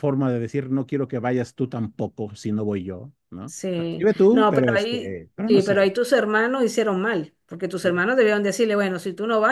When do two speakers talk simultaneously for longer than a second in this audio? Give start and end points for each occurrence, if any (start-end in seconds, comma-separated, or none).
3.4-5.9